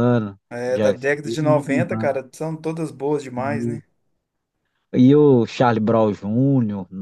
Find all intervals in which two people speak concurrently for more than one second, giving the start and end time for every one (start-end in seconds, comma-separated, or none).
0.5-2.1